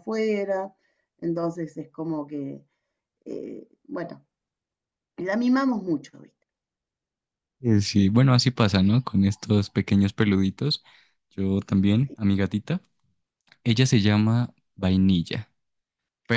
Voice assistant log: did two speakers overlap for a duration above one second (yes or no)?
no